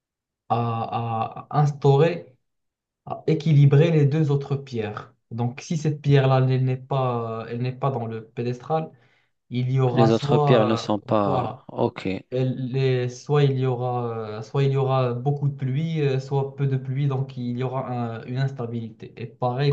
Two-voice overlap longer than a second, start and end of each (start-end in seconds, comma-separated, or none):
9.9-11.6